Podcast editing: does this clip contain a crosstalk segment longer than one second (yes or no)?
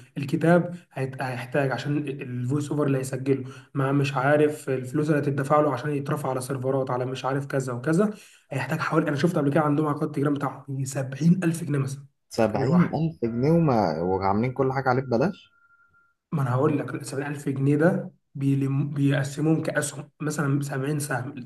no